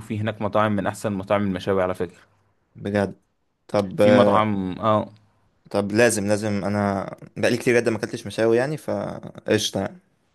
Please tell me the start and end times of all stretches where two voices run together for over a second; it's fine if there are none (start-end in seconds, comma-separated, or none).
none